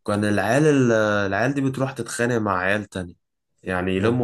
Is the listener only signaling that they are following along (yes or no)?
yes